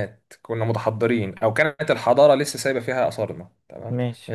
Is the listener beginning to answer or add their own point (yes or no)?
no